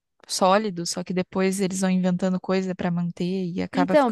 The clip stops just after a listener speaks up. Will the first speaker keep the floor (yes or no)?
no